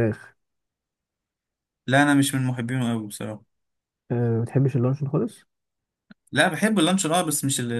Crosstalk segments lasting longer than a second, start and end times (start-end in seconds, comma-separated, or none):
none